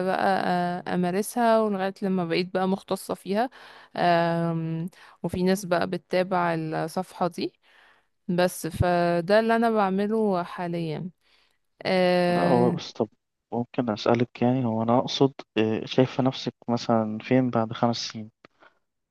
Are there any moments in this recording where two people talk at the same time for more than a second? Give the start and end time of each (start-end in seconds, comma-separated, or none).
none